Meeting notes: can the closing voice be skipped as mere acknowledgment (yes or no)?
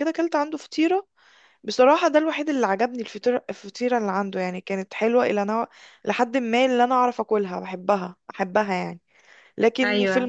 yes